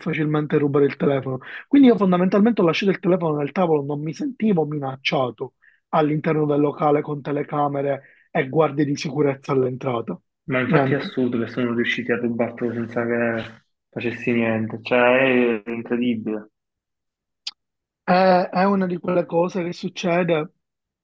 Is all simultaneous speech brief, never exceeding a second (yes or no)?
yes